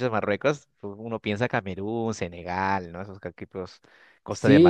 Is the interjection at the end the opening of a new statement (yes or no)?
yes